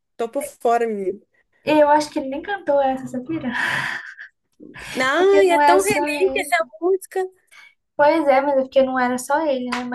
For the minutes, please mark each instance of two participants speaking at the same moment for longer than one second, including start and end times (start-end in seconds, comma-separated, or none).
5.2-6.5